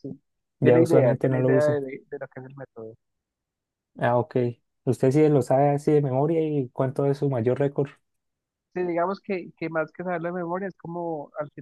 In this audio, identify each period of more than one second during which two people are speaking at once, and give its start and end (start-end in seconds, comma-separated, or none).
0.6-1.8